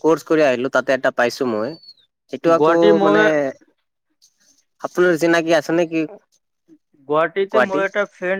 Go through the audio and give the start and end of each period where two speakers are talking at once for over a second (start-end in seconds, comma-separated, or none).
none